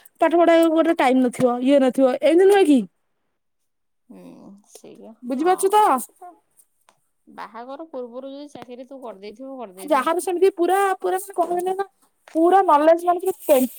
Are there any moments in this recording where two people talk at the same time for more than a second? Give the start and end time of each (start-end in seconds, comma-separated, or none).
none